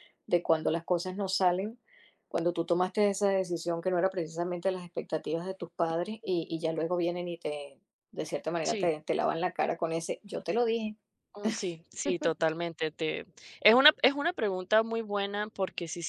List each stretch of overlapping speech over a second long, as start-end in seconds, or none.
none